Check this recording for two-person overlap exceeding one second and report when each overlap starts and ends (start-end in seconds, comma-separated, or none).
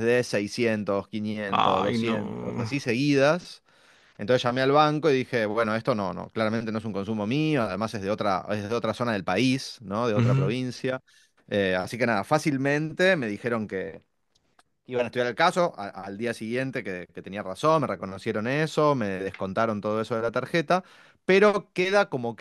1.5-2.7